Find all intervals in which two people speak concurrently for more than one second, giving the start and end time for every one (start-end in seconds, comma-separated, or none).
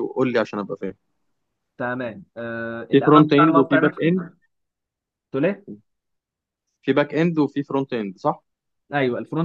2.9-4.1